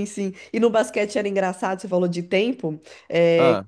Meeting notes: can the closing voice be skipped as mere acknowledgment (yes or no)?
yes